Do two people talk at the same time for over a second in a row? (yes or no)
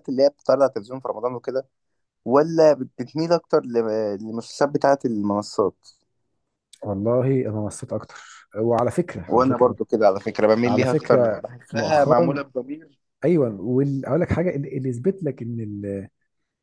yes